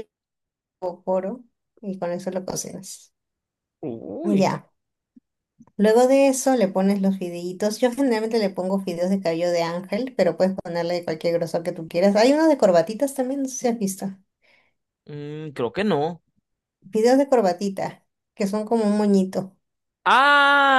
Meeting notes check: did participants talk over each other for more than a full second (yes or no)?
no